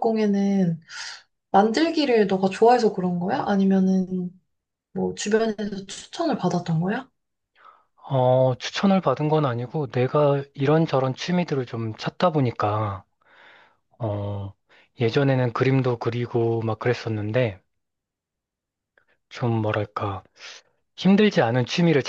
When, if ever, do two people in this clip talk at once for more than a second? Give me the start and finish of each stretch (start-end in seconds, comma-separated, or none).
none